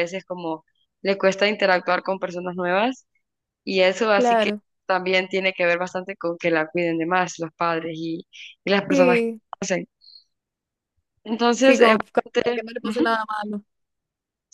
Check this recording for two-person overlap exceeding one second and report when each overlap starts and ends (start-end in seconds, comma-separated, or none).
none